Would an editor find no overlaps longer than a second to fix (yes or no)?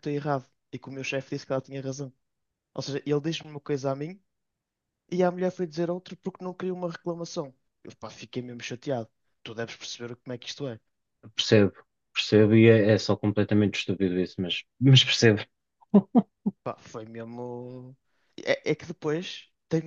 yes